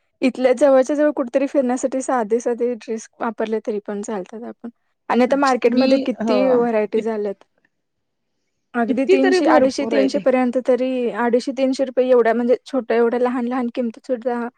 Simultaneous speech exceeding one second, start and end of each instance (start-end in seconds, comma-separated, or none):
8.9-10.2